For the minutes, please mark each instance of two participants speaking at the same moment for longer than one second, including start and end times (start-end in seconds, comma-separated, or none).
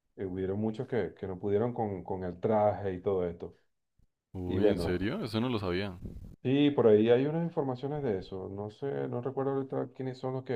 none